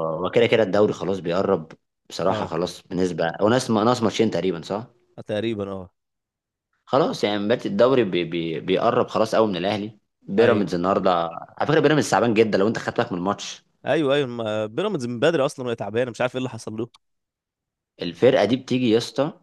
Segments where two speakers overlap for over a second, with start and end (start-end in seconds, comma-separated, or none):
none